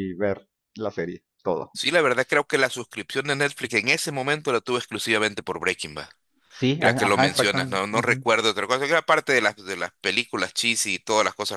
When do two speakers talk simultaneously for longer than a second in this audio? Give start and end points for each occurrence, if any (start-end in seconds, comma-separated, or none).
6.8-8.2